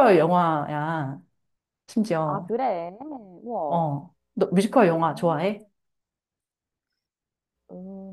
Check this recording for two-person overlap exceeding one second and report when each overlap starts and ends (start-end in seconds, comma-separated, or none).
none